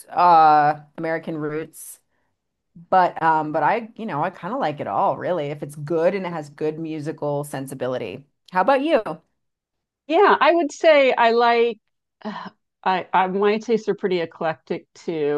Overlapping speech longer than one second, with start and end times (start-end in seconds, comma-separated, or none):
none